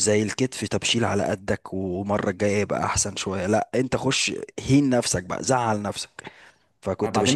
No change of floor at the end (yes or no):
no